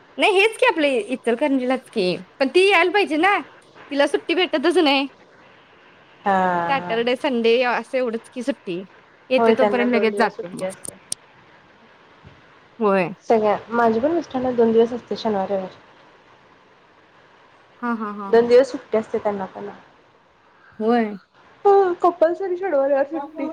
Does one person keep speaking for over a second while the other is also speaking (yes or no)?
yes